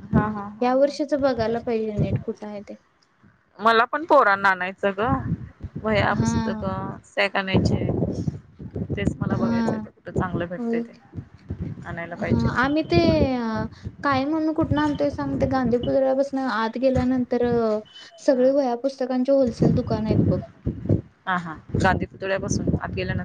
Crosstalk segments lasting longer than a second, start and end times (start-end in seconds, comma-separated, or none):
none